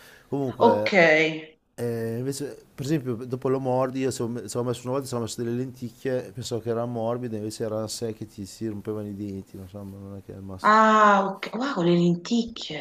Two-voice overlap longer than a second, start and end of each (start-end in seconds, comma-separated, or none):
none